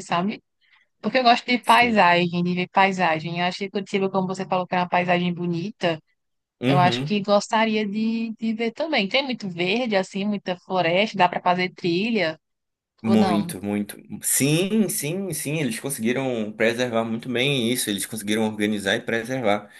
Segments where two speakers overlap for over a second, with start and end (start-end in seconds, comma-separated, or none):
none